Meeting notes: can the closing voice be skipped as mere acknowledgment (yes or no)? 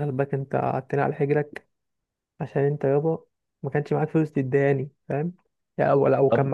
yes